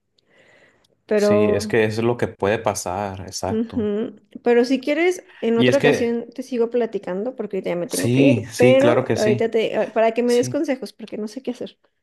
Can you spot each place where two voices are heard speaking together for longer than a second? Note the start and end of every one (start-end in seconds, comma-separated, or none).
7.9-9.5